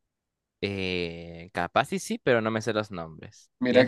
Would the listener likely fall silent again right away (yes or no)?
no